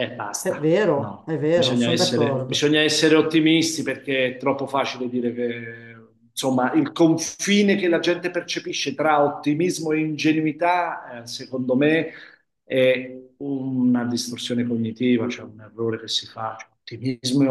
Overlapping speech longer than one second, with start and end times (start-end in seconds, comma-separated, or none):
0.6-2.7